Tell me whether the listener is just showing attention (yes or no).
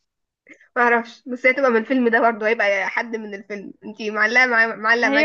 no